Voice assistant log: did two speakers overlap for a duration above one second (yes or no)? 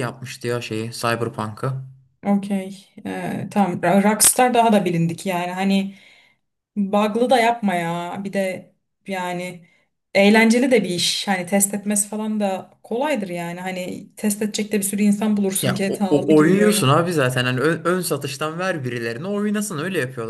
yes